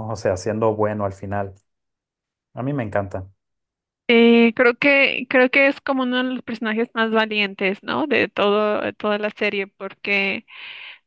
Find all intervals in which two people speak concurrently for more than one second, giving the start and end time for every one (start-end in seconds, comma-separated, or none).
none